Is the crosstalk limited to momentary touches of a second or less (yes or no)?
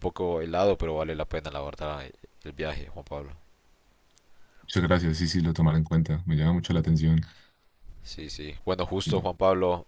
yes